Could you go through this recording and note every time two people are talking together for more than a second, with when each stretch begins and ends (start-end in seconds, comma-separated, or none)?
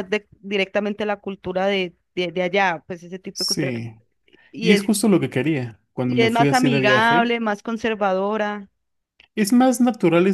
6.0-7.4